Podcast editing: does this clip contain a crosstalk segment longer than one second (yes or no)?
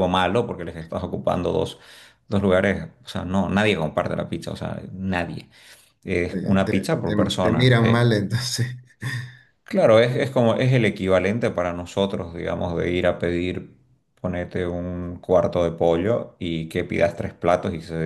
yes